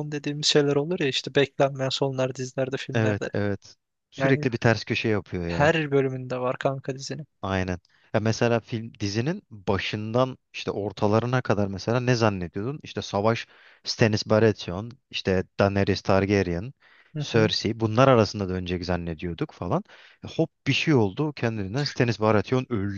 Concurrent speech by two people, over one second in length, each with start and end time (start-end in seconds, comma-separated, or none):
none